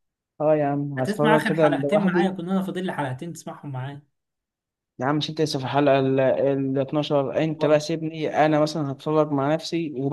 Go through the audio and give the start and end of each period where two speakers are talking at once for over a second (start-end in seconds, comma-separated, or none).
1.0-2.4